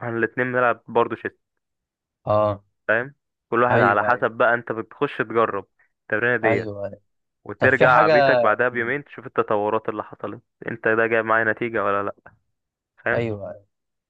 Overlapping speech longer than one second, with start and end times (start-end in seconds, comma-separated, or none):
7.6-9.0